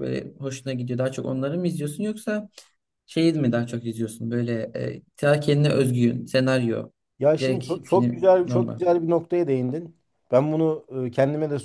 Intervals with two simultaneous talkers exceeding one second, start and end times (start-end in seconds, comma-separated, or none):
7.4-8.8